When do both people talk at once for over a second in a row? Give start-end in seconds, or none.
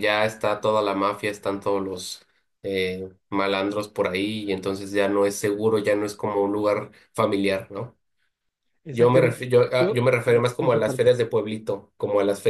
8.9-11.1